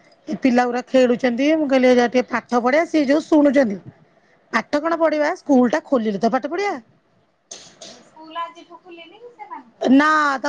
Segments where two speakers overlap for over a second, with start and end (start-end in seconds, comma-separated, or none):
none